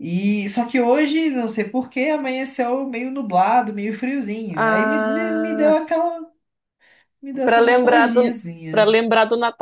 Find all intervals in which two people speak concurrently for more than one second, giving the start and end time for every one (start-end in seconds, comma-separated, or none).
4.5-5.8, 7.4-8.9